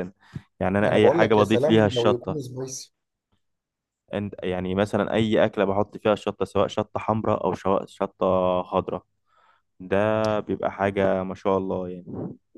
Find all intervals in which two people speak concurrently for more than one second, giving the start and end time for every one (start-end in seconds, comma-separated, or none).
0.8-2.4